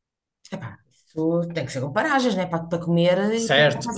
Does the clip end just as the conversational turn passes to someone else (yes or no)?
yes